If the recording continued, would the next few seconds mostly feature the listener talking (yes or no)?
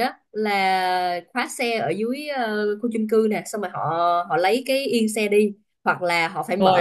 no